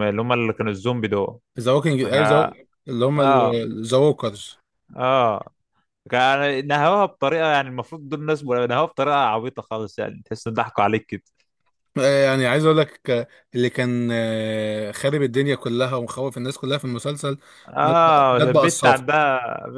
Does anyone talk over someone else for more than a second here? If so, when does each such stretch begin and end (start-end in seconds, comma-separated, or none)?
17.8-19.0